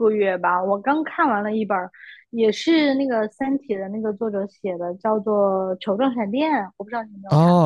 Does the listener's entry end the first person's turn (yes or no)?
yes